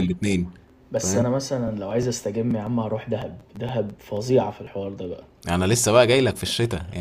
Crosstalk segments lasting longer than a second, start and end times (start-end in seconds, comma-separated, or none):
none